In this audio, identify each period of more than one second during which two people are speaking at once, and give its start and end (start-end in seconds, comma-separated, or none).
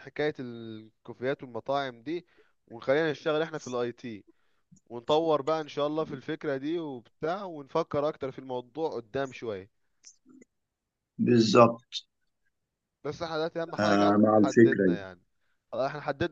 13.8-15.0